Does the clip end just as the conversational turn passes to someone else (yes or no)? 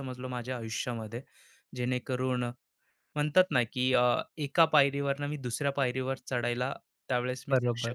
yes